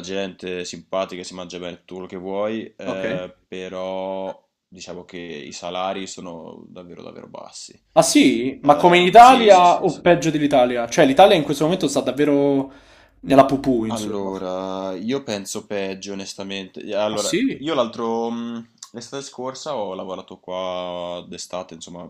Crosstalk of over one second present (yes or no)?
yes